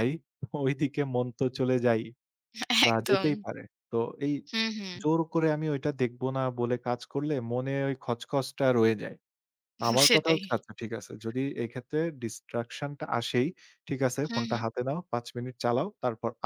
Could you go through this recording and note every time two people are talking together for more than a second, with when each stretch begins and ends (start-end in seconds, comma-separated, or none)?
none